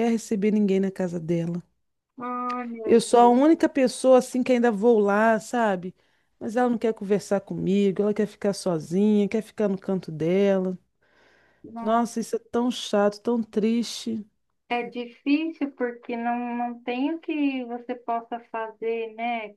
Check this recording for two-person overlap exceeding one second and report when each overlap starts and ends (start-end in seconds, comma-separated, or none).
none